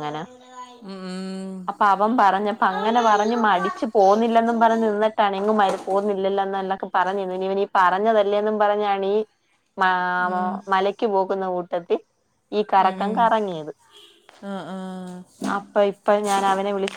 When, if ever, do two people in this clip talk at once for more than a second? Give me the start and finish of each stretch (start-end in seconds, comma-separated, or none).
2.8-4.9